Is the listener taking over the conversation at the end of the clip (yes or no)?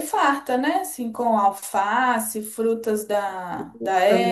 yes